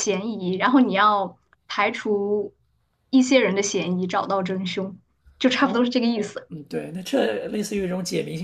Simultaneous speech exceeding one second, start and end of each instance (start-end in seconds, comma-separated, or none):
none